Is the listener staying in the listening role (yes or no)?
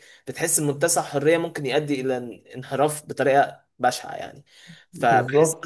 yes